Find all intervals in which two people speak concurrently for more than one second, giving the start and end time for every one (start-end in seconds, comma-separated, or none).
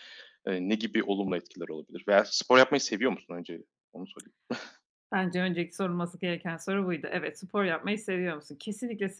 none